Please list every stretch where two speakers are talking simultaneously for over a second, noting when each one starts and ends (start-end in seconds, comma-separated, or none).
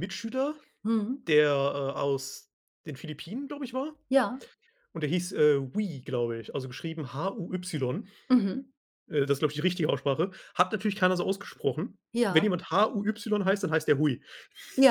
none